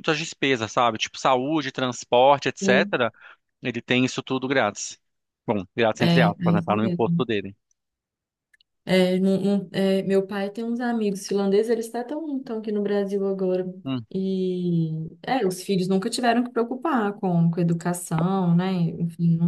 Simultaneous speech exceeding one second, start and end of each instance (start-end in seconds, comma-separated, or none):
6.0-7.2